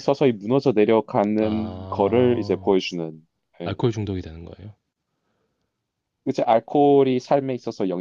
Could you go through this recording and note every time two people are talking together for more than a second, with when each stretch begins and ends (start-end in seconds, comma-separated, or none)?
1.4-2.8